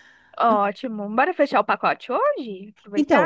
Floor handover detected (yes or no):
yes